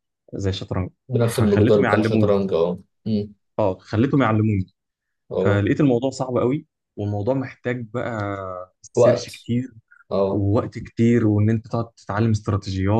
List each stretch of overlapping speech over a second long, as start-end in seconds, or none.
1.1-2.4